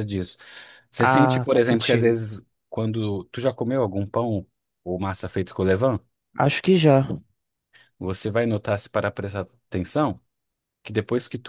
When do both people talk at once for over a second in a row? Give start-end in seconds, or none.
1.0-2.2